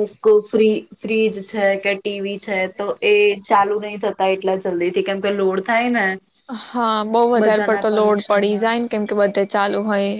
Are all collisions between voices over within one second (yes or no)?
no